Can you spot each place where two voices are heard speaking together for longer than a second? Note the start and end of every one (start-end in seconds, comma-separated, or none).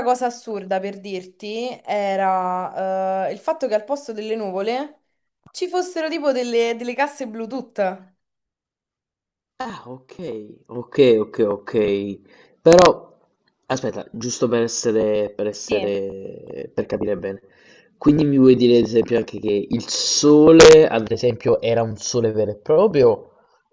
none